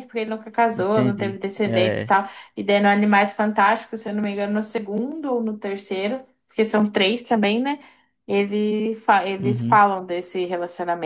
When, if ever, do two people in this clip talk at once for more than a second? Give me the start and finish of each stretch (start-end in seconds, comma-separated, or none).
0.7-2.1